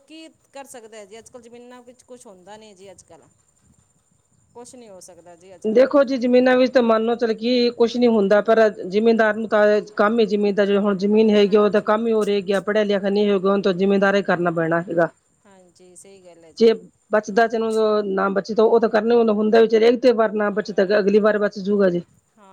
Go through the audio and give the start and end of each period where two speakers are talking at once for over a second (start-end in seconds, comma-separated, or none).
none